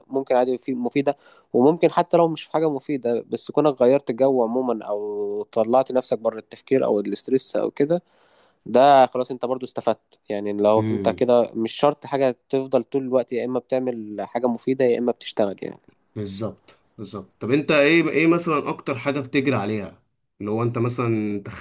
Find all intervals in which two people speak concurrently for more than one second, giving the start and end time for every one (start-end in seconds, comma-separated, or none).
none